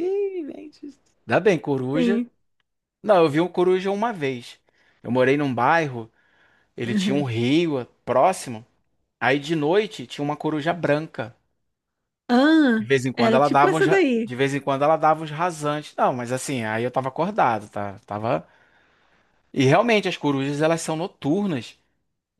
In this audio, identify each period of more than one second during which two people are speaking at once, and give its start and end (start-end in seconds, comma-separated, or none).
12.8-14.3